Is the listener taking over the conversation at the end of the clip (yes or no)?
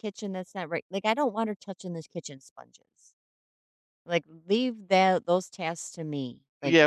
yes